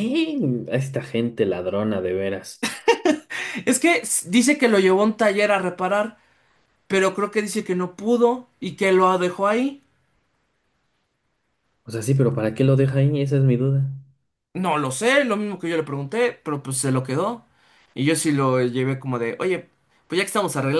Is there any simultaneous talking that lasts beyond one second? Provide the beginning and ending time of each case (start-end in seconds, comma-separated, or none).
none